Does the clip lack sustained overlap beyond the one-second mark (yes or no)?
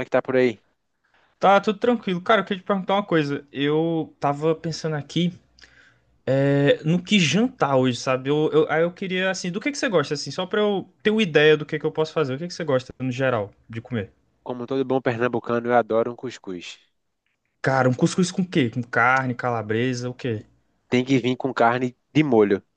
yes